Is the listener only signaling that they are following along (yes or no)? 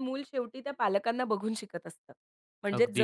yes